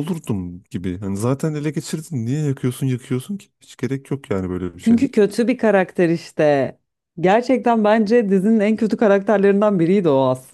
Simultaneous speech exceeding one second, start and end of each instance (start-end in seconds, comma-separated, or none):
none